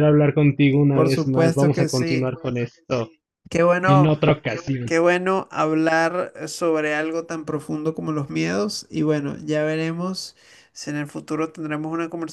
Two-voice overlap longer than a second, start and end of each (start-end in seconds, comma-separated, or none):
0.9-2.4